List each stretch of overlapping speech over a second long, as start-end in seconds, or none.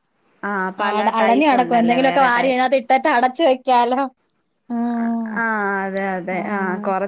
0.8-2.6